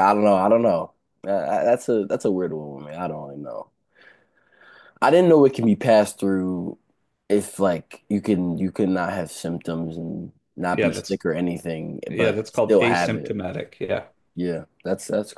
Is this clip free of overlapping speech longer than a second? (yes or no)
no